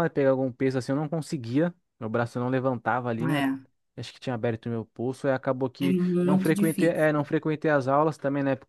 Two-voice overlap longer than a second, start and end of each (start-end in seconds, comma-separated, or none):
5.8-7.3